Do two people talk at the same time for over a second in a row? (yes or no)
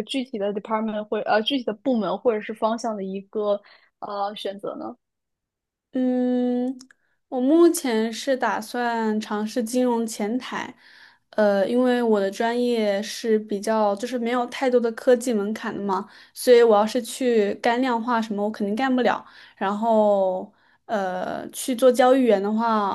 no